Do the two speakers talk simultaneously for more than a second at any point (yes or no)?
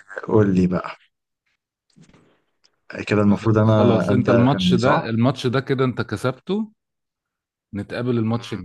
yes